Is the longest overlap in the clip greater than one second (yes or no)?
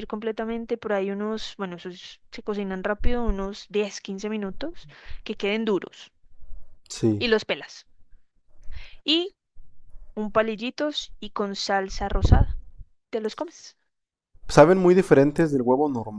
no